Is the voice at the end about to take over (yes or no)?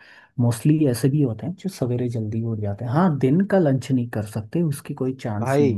yes